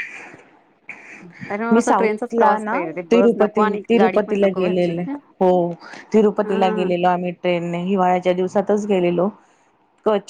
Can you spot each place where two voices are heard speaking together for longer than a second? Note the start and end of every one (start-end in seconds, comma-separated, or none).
1.7-5.0